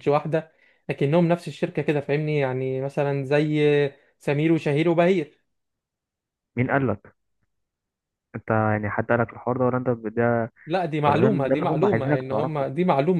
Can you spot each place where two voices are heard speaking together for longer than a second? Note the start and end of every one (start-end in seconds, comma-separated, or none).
11.1-12.7